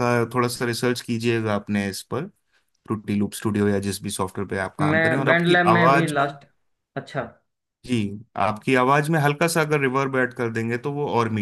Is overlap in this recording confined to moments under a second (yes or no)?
no